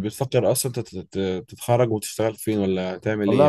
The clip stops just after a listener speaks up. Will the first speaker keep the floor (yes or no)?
no